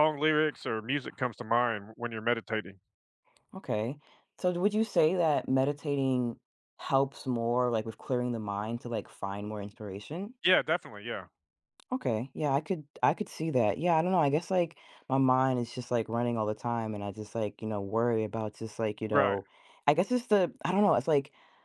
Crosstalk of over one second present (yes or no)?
no